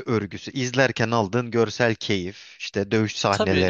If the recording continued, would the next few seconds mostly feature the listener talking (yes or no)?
yes